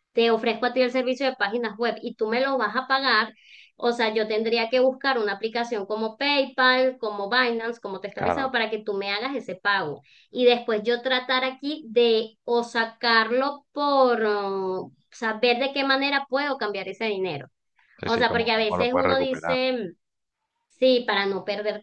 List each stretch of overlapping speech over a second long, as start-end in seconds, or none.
18.0-19.6